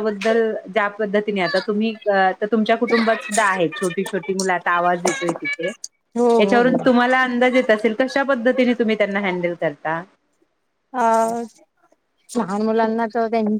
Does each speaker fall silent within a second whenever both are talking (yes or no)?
yes